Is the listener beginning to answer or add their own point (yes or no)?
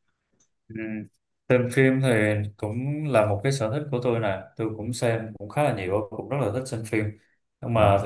no